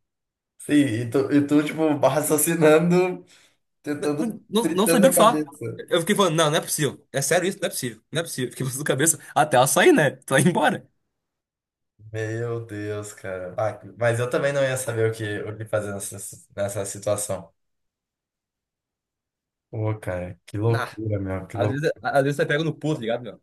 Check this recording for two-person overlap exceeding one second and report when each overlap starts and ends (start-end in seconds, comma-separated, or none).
4.2-5.4